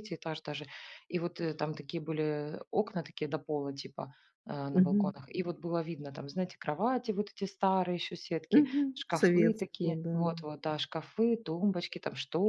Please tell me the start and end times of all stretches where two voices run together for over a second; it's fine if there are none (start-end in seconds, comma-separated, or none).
8.5-10.3